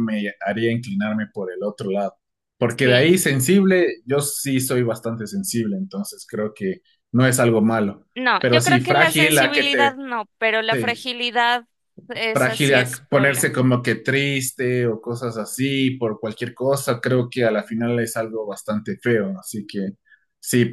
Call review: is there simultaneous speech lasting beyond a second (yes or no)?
yes